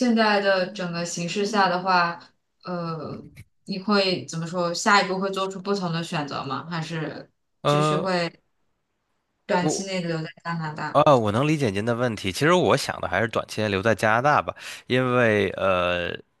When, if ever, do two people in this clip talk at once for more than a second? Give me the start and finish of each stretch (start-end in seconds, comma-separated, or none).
none